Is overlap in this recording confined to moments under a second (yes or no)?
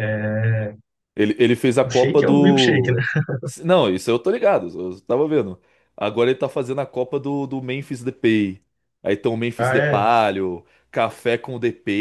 no